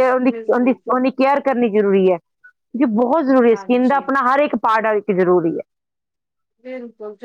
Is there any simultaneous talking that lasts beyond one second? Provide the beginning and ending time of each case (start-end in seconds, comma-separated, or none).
none